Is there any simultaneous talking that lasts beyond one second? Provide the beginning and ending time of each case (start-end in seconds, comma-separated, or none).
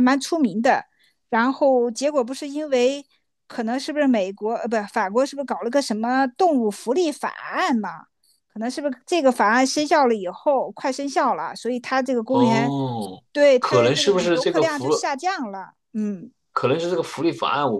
13.6-14.9